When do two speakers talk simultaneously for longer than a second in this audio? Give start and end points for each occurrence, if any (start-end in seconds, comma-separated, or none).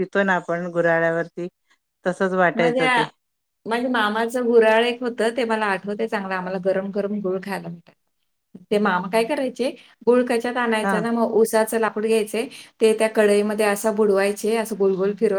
none